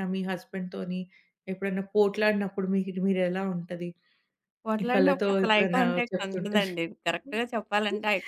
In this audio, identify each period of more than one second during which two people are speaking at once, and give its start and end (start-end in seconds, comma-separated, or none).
4.9-6.6